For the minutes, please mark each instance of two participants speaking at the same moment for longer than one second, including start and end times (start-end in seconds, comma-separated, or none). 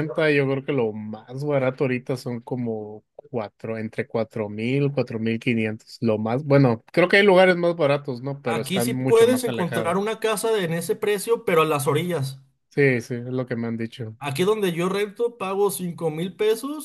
8.4-9.9